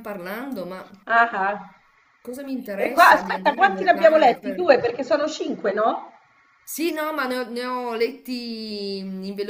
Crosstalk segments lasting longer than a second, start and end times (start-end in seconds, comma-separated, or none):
2.8-4.8